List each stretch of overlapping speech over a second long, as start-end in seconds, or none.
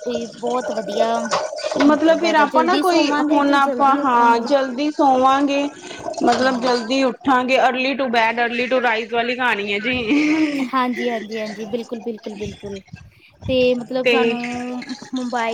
1.9-4.5